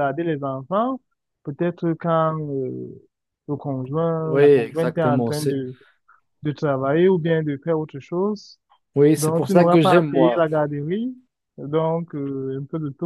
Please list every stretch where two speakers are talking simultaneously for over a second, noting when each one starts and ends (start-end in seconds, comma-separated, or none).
4.2-5.6, 9.2-10.4